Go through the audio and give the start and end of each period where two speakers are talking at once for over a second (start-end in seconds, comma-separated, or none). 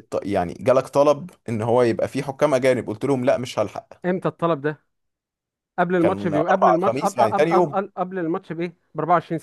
6.0-7.8